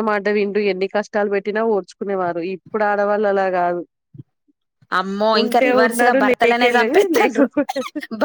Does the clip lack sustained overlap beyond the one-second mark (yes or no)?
no